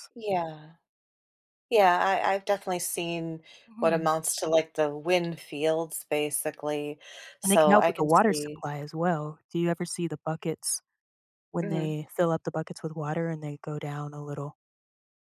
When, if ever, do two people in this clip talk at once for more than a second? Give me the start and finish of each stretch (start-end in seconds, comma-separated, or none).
7.4-8.6